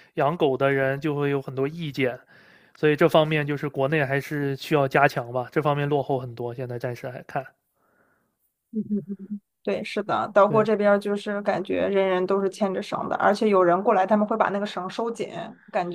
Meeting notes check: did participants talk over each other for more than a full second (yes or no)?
no